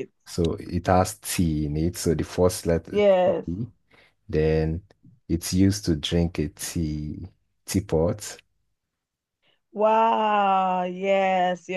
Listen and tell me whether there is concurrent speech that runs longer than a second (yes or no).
no